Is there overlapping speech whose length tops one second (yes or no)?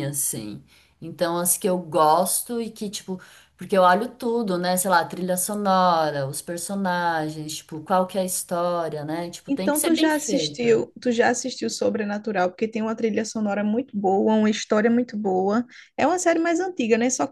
yes